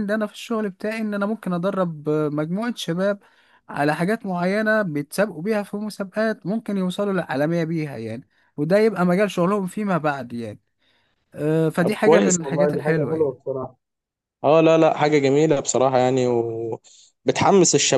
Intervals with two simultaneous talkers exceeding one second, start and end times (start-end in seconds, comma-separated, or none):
11.8-13.3